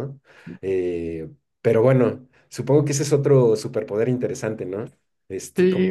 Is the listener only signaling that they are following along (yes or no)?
no